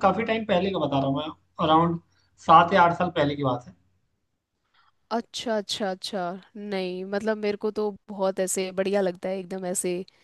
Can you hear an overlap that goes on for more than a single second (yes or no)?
no